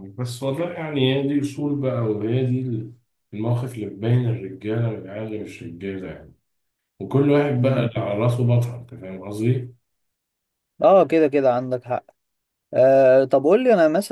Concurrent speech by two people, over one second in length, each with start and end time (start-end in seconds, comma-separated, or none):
none